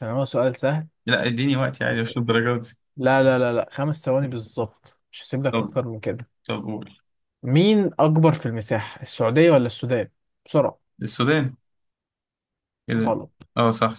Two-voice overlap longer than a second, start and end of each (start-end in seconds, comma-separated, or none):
none